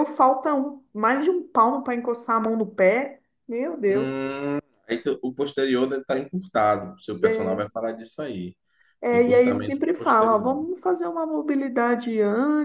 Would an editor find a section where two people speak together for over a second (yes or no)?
yes